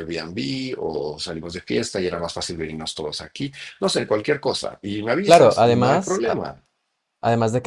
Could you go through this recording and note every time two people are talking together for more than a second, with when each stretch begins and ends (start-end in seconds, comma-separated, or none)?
5.2-6.4